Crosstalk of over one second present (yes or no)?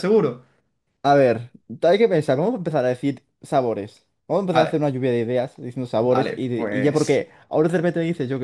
yes